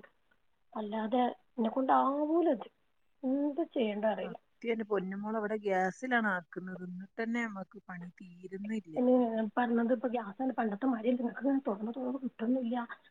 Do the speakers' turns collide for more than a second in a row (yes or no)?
no